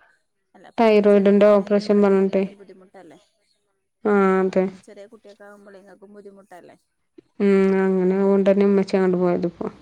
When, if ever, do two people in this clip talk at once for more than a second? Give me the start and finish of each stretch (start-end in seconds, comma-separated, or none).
0.8-2.4